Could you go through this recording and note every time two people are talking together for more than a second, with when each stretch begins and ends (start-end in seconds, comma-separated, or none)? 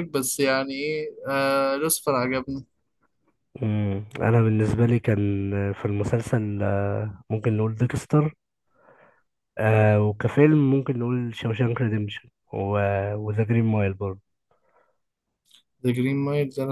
none